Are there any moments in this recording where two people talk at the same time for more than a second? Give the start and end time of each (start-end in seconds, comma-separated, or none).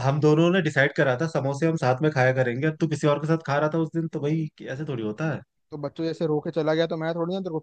none